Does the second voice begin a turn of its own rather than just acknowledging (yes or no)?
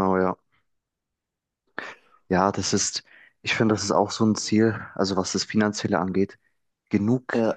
no